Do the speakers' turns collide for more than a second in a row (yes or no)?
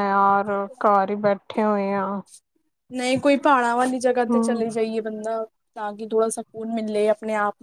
no